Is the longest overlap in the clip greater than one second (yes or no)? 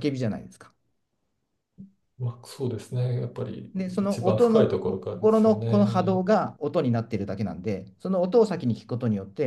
yes